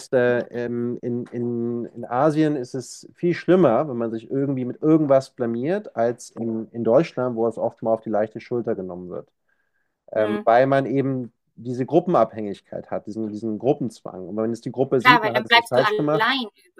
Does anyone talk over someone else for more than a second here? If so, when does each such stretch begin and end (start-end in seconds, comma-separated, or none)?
15.0-16.3